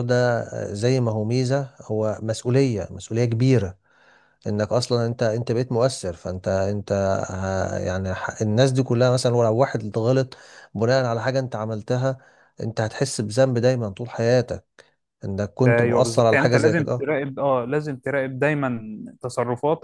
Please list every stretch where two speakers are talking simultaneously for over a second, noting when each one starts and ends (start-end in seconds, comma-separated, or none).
15.7-17.1